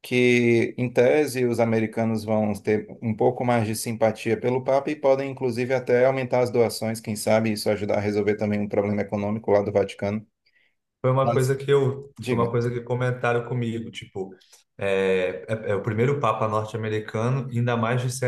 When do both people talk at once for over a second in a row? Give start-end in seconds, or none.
none